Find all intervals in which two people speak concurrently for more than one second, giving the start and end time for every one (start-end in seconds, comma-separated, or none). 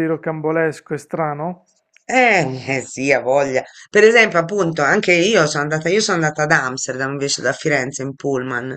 none